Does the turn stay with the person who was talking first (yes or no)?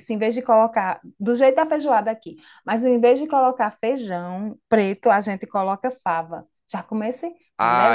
no